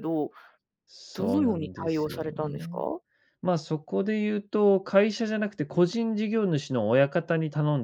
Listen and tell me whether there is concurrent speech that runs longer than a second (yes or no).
yes